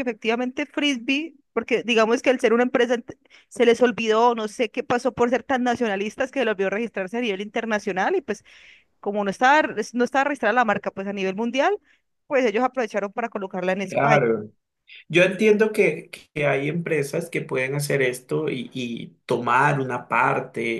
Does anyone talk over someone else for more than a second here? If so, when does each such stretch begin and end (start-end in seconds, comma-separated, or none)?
none